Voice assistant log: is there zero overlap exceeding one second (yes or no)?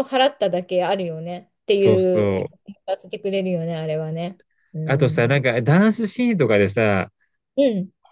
yes